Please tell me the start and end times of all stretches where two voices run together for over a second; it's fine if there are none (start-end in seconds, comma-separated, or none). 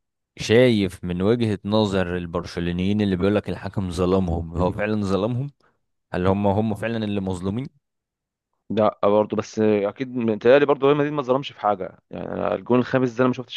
none